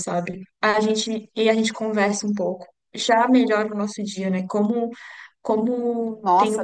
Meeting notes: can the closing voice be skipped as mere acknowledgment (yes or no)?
no